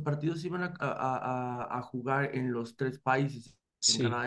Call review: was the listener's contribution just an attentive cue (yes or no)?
yes